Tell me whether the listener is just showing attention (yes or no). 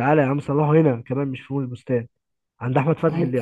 yes